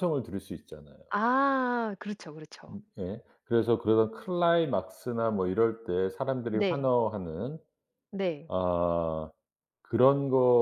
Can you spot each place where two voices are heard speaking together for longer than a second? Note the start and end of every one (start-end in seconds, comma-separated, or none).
none